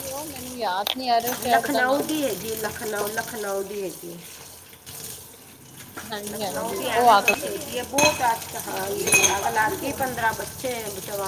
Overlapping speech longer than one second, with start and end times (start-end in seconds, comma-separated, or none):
6.3-7.8